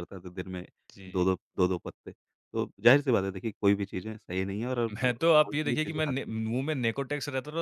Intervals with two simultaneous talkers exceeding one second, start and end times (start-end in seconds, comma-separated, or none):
4.9-6.3